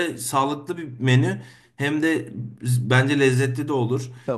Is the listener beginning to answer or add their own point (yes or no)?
no